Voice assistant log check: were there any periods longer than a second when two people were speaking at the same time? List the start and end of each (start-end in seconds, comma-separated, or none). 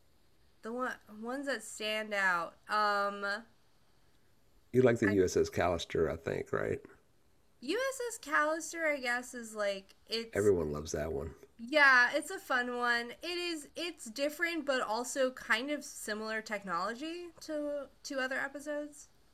none